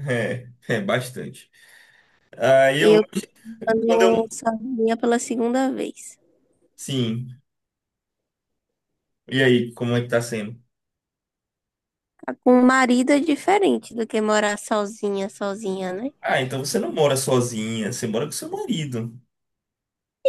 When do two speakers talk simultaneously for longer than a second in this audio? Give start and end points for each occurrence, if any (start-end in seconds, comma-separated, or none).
none